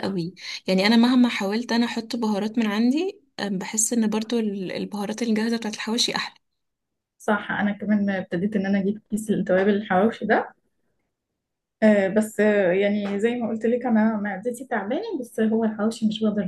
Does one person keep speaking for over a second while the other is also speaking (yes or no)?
no